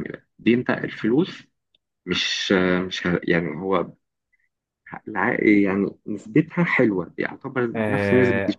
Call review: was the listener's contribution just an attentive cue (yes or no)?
no